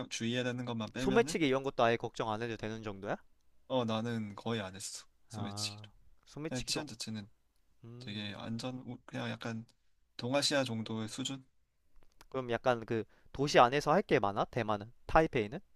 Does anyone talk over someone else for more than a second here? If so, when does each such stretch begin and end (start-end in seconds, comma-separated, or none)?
none